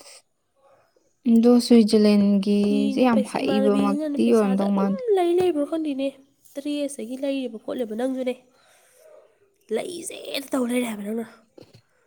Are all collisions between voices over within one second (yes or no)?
no